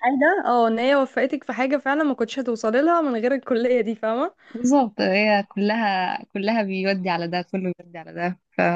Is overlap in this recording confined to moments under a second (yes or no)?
yes